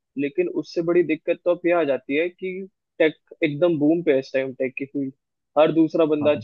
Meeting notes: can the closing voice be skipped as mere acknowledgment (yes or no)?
yes